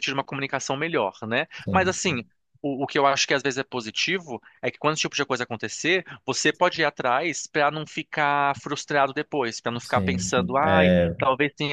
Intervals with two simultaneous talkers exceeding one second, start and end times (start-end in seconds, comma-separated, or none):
9.8-11.2